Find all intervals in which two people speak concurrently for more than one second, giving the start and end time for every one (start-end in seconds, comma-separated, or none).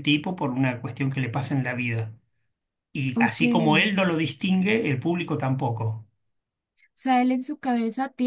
none